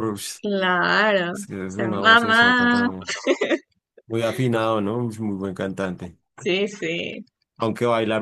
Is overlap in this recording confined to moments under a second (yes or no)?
no